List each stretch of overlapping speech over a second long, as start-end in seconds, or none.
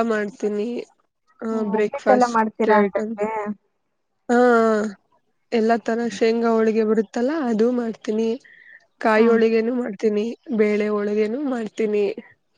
1.8-3.1